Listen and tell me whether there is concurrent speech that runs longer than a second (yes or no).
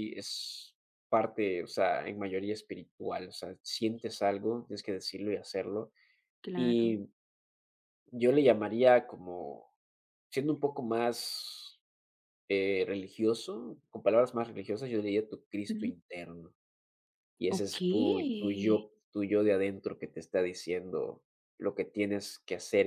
yes